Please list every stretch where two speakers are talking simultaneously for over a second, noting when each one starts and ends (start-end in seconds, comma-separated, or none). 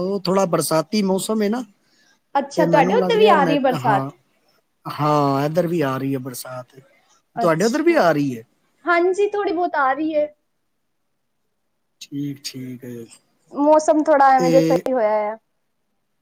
2.5-4.1